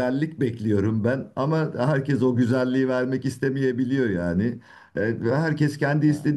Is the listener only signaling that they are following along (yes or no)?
yes